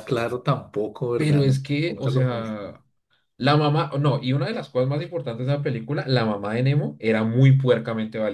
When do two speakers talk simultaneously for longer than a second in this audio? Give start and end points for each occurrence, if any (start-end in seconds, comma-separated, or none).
1.2-2.8